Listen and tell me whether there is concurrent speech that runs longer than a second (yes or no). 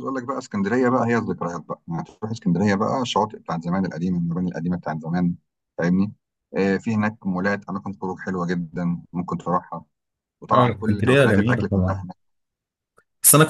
yes